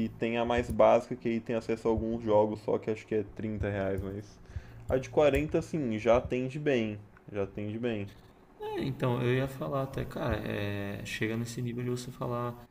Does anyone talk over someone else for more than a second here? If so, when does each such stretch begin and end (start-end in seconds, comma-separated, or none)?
none